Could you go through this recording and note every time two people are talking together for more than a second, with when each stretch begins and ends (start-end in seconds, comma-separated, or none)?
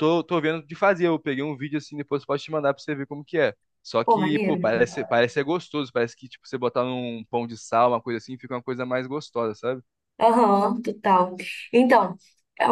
none